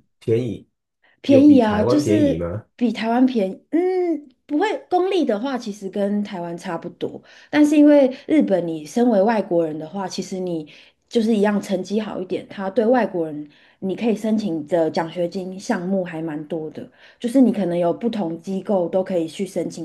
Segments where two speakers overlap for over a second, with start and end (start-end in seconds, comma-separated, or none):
1.2-2.6